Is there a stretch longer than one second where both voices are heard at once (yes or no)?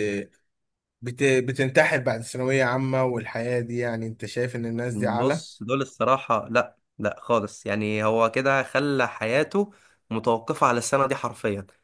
no